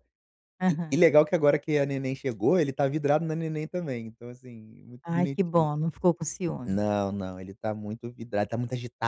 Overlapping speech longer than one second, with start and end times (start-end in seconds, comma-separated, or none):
none